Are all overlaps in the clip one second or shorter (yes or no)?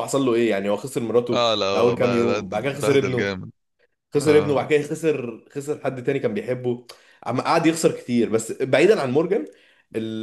no